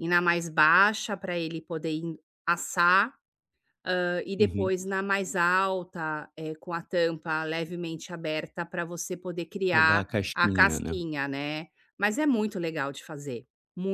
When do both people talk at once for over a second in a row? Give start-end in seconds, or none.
9.7-10.9